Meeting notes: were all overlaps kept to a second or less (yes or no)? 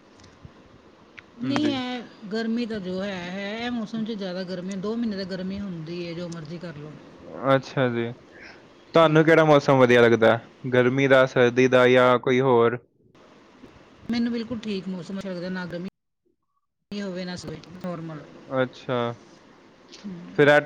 yes